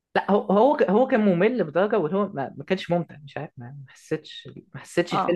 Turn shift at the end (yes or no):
no